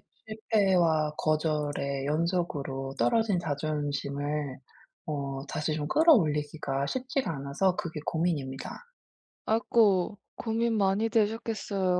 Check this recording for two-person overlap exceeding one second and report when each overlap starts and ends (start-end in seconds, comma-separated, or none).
none